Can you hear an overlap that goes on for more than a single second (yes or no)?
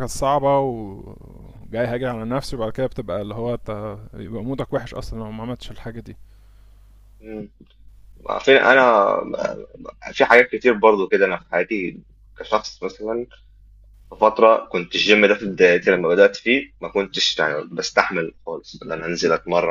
no